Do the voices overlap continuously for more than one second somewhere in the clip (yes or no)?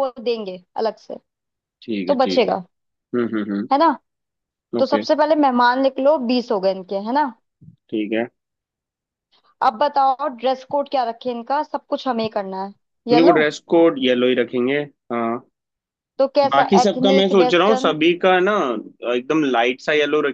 yes